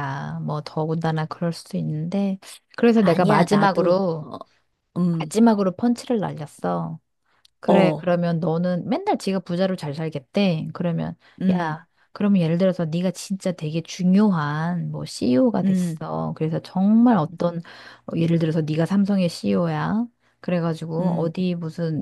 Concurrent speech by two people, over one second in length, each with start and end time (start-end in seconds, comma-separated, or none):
3.0-4.3